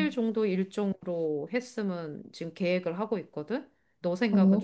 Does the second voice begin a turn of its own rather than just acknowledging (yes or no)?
yes